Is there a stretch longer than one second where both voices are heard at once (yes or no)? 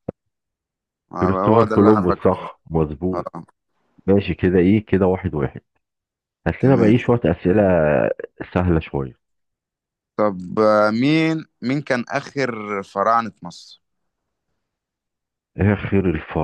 yes